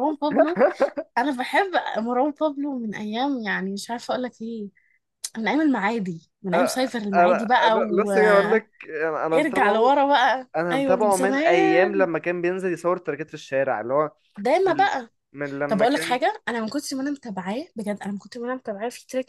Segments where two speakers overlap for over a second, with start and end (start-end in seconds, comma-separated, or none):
6.5-8.6, 10.6-12.1